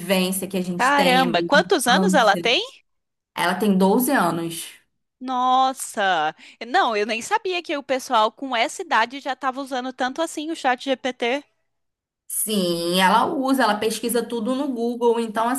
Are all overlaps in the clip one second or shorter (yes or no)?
no